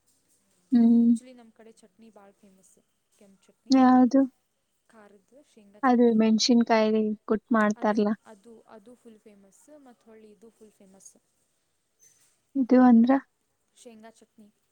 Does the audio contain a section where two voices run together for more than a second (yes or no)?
no